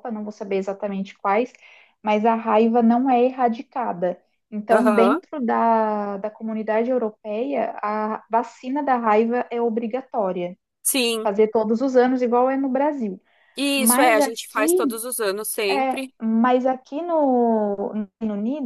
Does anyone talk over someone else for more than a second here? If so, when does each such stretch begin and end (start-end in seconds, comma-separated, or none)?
13.8-15.0